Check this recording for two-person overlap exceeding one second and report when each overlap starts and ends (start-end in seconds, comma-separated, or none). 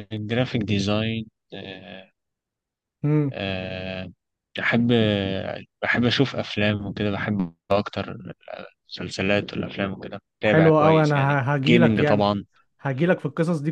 10.4-12.3